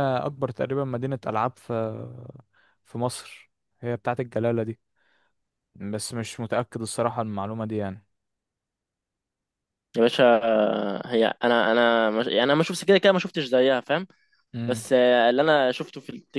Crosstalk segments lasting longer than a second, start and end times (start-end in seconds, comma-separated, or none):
none